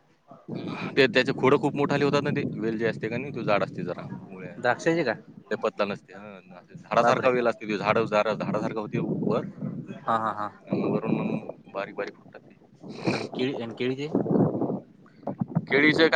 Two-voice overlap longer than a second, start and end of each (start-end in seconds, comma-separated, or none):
none